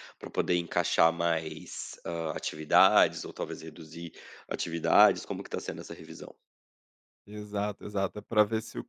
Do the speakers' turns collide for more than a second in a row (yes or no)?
no